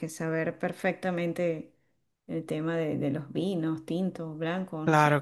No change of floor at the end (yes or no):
no